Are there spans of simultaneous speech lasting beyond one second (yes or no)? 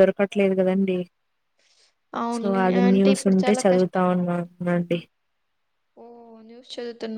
yes